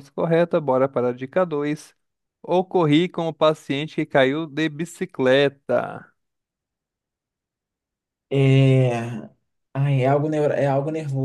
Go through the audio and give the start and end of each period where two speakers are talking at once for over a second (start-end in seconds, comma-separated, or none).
none